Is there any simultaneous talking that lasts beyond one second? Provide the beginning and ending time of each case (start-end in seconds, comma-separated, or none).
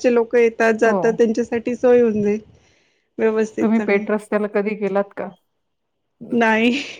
none